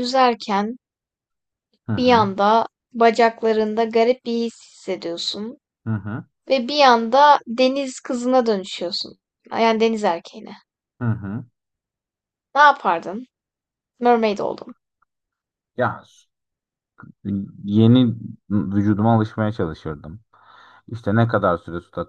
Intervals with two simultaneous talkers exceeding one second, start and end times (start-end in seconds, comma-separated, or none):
none